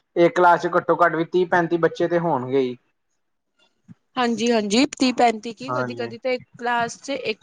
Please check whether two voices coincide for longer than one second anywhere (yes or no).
no